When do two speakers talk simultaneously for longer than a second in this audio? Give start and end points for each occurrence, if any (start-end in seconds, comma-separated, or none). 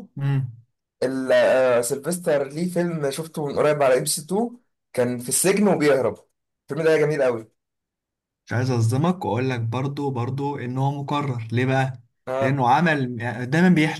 none